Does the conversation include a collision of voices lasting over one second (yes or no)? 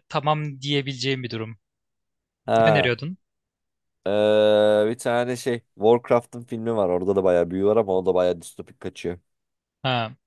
no